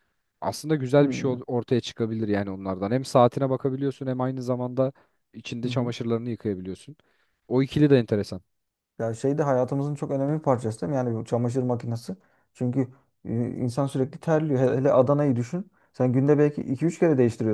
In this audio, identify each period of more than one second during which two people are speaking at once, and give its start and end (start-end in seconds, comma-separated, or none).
none